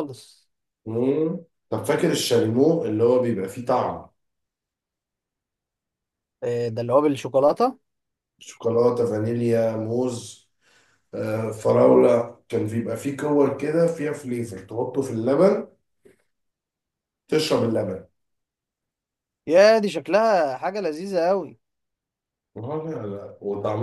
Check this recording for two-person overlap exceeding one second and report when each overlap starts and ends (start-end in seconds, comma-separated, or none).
none